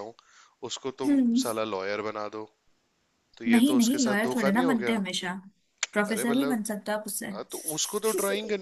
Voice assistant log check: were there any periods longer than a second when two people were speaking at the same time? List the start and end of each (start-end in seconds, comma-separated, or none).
3.5-5.0